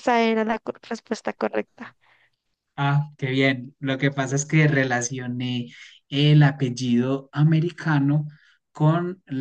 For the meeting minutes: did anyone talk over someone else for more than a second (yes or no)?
no